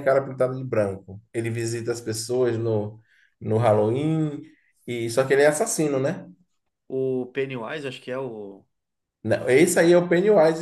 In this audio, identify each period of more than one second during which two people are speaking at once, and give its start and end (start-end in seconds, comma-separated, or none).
none